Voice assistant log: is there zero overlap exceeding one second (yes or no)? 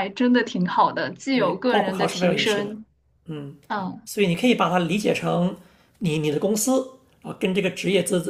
no